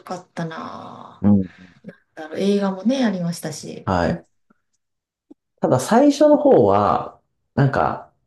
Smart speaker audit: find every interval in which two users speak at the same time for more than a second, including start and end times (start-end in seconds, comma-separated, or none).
none